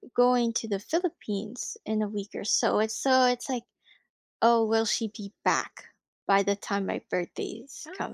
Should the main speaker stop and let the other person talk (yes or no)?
yes